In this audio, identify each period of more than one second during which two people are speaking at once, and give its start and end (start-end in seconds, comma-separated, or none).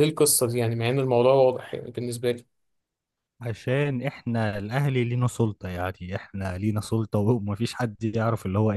none